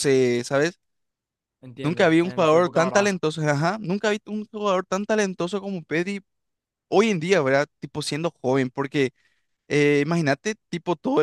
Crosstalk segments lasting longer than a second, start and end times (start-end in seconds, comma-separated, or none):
1.8-3.1